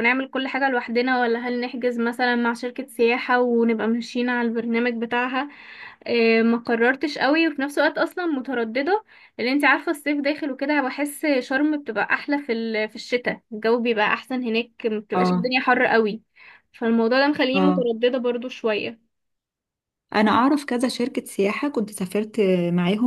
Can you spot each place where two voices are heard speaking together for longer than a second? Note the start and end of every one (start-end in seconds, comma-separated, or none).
none